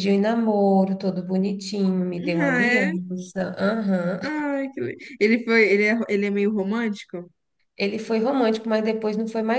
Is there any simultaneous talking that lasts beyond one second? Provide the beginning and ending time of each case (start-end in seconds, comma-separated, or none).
none